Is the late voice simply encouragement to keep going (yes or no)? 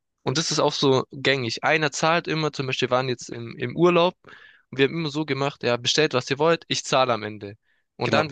yes